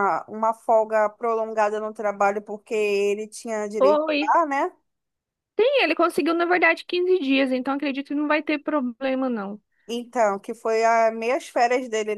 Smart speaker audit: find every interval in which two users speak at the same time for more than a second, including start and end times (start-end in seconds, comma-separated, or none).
none